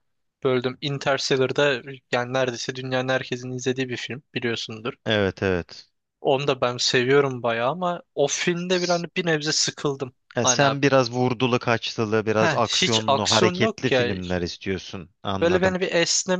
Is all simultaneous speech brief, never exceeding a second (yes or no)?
no